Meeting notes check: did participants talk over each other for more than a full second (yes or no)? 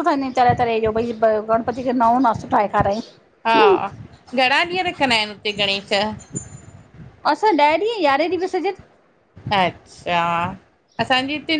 no